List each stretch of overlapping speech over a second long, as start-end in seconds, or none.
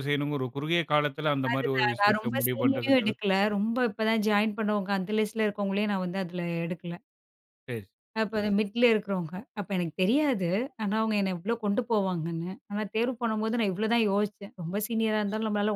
1.5-3.6